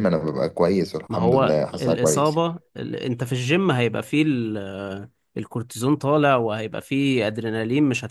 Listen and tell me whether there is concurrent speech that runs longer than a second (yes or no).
yes